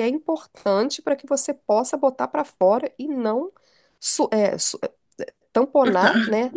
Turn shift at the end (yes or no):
no